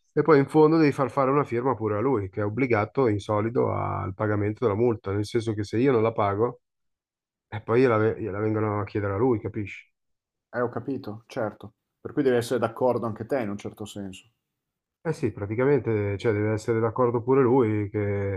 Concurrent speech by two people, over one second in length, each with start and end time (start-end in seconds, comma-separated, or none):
none